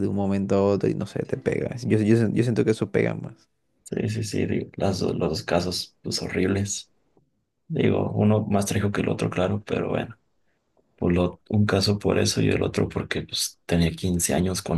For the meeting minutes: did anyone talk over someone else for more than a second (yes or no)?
no